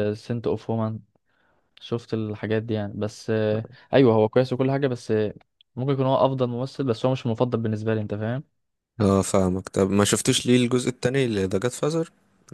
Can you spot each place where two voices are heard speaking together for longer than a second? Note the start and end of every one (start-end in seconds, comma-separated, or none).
none